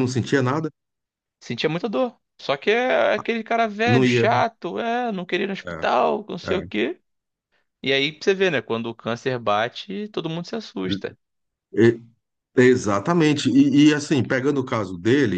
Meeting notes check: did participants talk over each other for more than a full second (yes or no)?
no